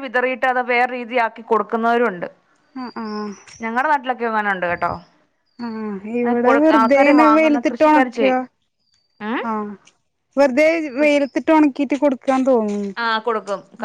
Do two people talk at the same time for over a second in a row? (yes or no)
yes